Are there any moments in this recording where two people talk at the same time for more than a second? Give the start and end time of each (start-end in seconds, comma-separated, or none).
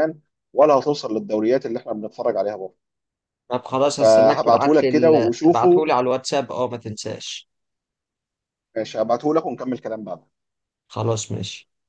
4.0-5.9